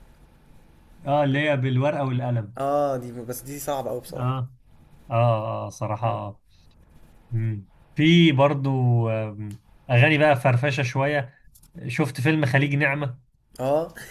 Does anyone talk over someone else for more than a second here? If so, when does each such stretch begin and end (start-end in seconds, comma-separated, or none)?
none